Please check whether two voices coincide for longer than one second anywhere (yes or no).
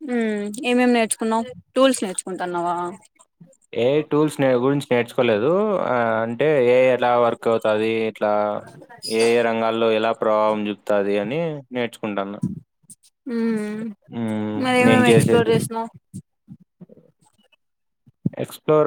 no